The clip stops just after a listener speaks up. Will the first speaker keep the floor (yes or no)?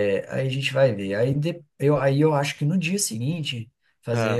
yes